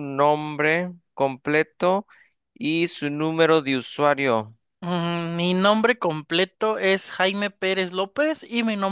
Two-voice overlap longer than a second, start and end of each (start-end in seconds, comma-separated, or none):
none